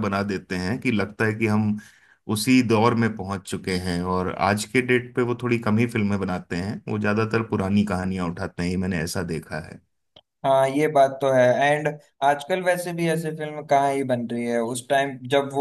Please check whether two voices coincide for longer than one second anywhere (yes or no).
no